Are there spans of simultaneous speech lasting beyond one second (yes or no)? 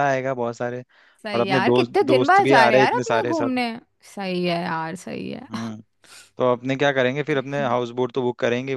yes